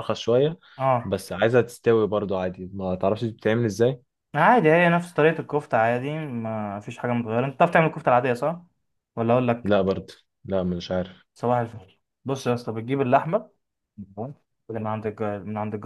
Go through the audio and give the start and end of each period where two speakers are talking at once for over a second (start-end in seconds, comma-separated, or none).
none